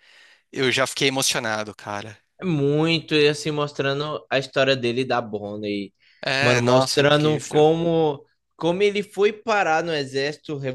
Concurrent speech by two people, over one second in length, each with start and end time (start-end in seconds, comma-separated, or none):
6.4-7.7